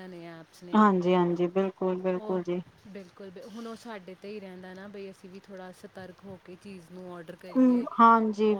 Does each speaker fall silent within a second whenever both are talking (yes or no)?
yes